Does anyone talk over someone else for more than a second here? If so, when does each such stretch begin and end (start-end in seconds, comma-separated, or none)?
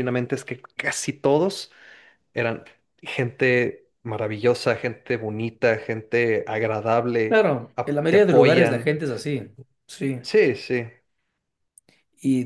7.2-8.9